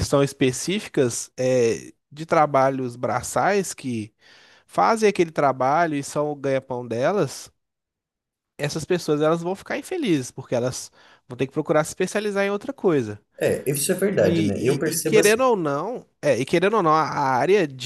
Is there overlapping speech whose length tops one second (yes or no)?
yes